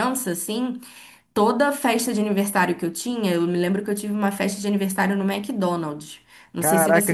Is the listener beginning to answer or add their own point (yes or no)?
yes